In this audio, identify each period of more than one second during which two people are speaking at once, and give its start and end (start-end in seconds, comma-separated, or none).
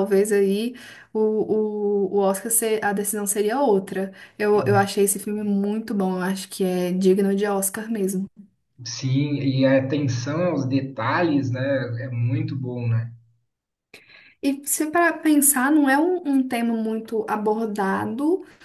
none